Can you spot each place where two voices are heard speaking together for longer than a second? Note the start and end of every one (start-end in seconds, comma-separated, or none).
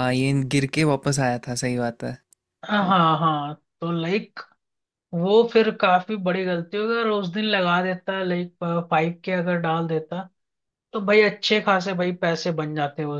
none